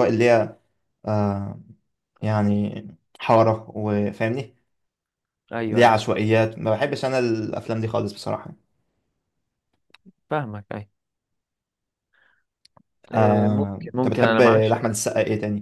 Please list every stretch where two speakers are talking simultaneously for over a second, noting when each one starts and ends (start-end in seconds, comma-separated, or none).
13.1-14.8